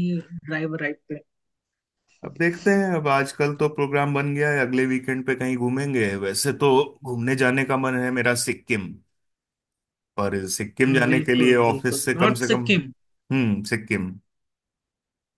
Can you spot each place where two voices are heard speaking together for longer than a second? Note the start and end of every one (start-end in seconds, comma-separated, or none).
10.9-12.6